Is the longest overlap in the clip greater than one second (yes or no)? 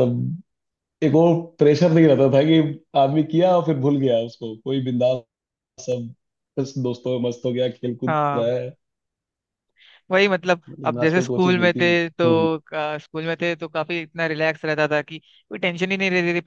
yes